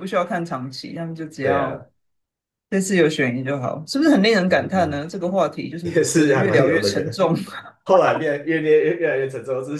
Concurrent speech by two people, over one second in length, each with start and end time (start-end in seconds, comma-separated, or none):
5.8-7.2